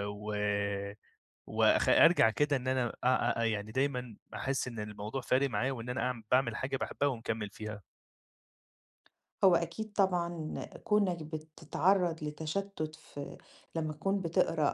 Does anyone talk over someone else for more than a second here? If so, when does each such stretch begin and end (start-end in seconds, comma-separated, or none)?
none